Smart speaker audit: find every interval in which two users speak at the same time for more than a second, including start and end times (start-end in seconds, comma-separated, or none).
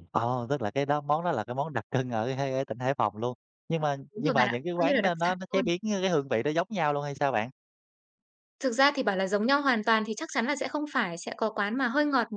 4.1-5.6